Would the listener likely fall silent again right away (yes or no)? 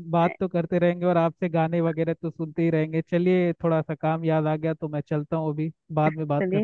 no